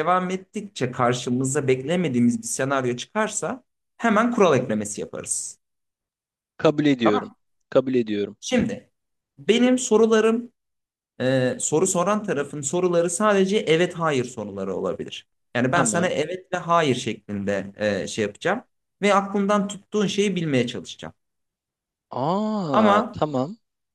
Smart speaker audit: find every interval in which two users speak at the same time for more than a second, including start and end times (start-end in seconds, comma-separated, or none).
none